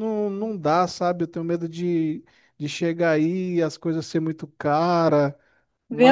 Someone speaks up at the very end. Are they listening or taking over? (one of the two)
taking over